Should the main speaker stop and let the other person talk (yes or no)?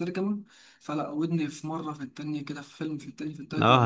no